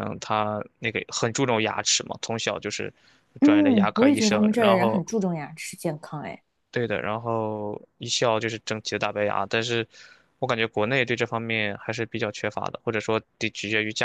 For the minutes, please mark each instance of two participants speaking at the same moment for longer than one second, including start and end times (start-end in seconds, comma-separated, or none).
3.4-5.0